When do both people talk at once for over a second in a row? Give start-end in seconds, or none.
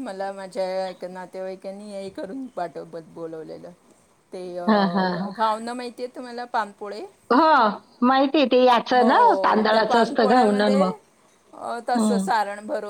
none